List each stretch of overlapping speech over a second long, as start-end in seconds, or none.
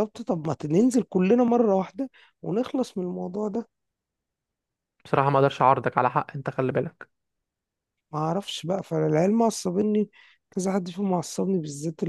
none